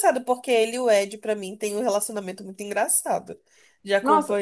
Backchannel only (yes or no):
no